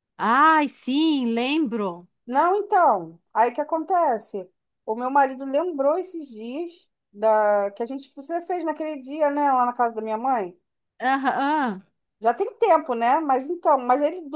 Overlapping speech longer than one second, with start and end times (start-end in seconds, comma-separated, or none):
none